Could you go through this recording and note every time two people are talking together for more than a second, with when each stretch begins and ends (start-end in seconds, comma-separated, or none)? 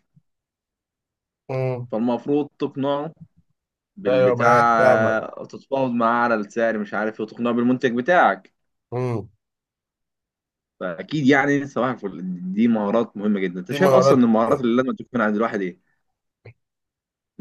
4.1-5.3